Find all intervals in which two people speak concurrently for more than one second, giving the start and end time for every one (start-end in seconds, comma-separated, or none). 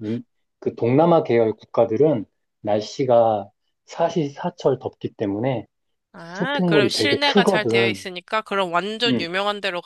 6.2-8.1